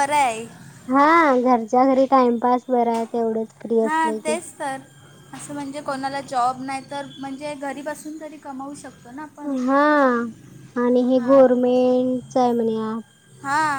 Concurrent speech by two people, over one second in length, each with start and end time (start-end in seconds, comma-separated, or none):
none